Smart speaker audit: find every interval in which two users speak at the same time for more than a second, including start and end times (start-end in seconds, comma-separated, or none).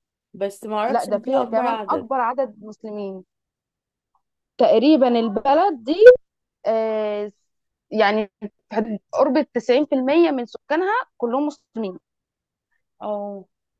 0.9-2.1